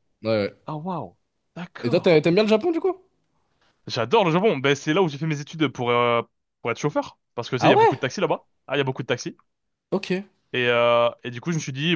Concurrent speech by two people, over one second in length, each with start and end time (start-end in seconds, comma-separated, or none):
none